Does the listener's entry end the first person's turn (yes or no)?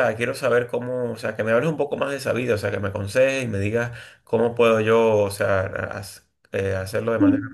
no